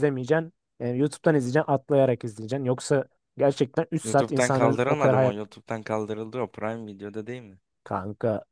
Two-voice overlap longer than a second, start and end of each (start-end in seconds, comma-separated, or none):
4.0-5.3